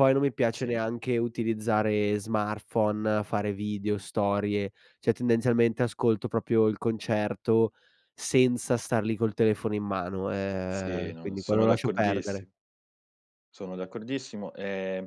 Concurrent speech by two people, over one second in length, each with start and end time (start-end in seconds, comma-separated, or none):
10.7-12.5